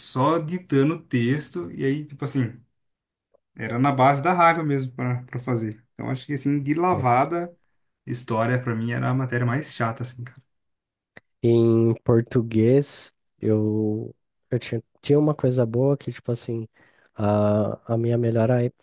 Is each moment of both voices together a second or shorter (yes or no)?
yes